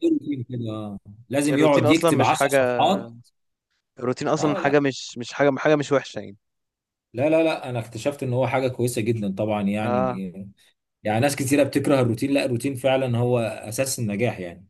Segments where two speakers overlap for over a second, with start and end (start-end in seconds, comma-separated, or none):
1.5-2.9